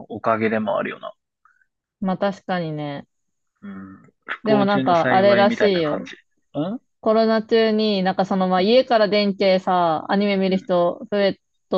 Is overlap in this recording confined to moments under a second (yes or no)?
no